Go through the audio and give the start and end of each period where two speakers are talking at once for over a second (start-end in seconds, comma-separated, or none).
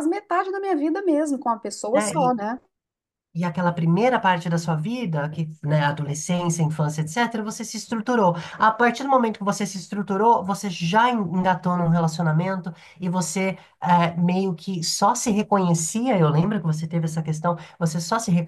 none